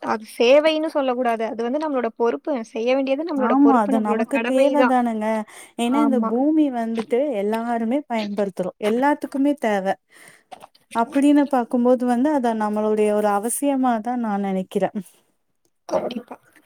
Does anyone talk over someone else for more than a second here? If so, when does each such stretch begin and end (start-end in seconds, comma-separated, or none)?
none